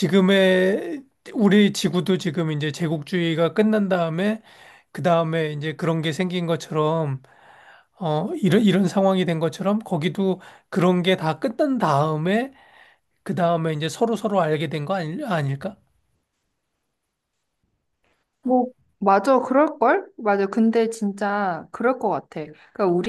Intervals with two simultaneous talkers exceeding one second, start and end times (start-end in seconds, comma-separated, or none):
none